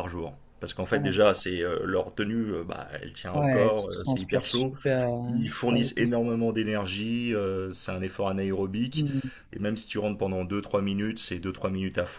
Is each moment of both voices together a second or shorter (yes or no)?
no